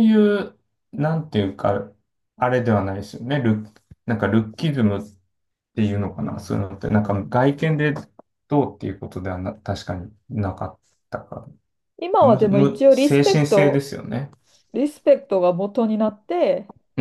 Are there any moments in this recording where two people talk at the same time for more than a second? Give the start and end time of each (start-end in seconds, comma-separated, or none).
12.3-13.9